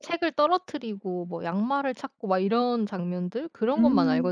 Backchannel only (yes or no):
no